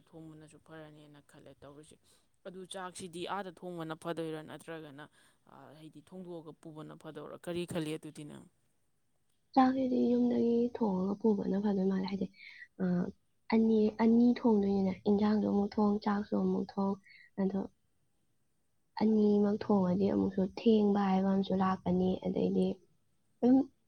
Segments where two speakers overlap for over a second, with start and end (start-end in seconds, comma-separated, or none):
none